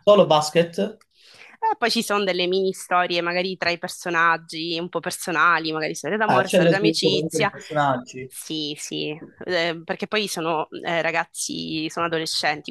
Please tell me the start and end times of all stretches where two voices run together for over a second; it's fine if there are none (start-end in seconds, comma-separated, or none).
6.3-7.5